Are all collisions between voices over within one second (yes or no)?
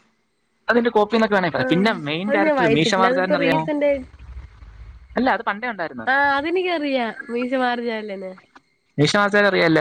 no